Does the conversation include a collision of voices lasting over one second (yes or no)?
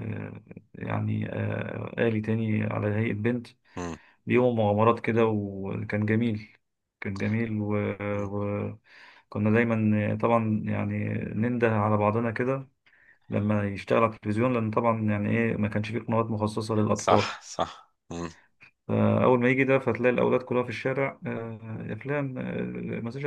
no